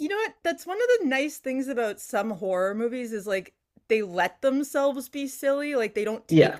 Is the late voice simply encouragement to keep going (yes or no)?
yes